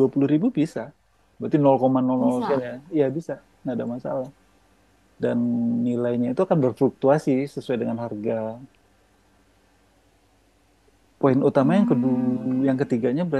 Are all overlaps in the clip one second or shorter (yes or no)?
no